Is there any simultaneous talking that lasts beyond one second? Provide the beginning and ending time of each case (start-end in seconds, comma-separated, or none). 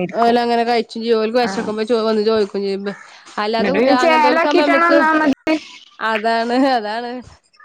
3.6-5.0